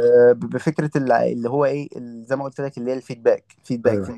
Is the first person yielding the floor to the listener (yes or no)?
no